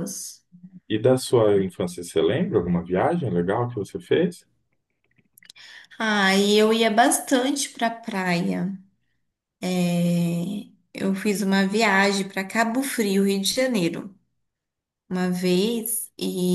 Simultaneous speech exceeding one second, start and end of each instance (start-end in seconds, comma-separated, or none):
none